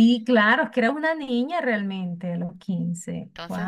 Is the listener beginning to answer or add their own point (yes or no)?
yes